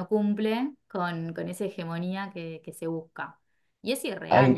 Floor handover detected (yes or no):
yes